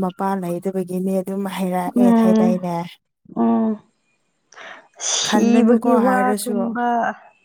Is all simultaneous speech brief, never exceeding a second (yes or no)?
no